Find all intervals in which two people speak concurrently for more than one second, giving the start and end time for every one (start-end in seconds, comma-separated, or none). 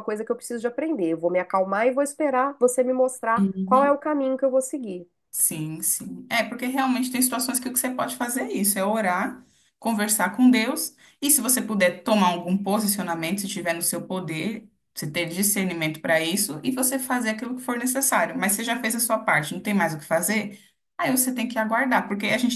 none